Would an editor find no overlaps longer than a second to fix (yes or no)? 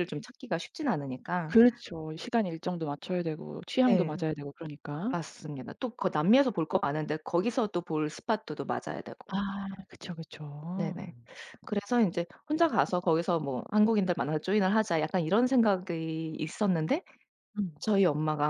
yes